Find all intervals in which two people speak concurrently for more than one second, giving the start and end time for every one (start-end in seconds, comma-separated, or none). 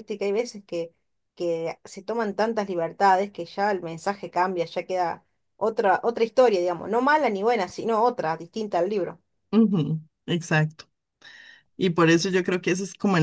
none